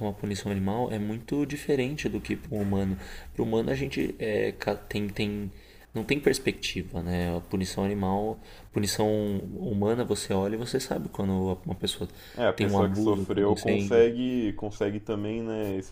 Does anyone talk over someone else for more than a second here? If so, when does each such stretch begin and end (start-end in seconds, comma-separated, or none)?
12.5-14.0